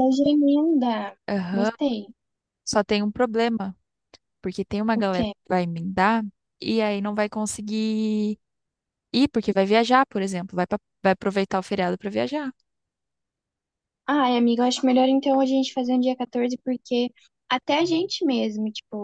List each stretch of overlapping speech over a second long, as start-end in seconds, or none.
none